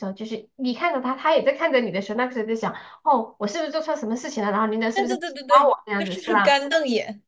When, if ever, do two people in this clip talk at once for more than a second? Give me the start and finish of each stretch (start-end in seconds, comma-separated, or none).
4.9-6.6